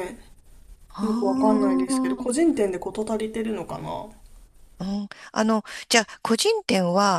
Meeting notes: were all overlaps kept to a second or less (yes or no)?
no